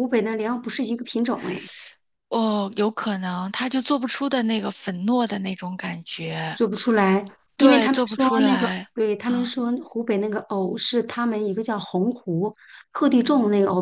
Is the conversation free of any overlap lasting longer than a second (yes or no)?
no